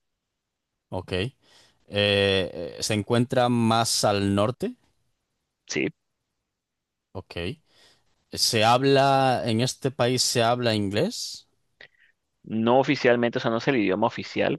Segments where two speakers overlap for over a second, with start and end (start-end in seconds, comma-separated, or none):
none